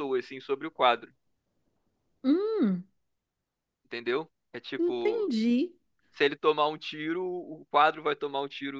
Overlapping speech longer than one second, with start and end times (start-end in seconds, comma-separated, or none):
none